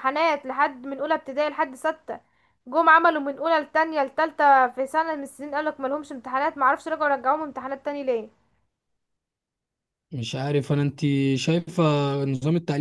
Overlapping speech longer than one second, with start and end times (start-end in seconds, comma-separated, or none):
none